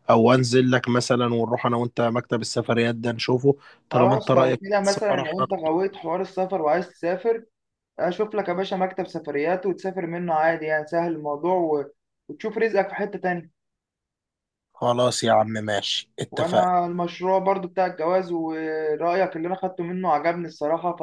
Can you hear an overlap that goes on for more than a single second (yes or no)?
yes